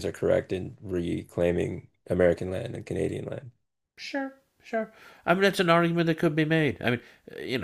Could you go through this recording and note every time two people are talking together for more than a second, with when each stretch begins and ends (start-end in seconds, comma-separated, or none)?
none